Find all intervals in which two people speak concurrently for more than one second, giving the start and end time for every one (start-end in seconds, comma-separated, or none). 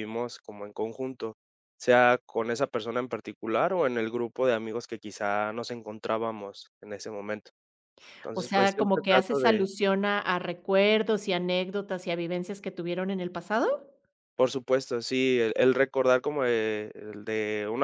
8.3-9.7